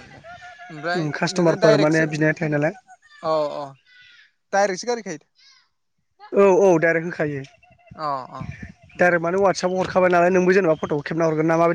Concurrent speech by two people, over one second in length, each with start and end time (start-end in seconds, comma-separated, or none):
0.9-2.7